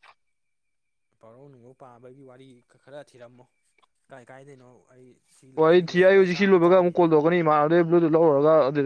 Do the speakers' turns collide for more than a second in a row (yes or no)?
yes